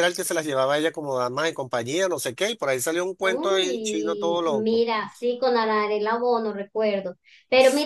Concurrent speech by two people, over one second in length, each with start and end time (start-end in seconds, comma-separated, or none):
3.2-4.8